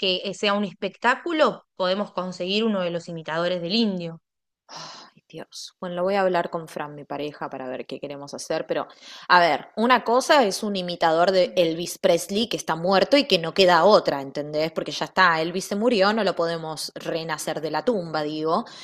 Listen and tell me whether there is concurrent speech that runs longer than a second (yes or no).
no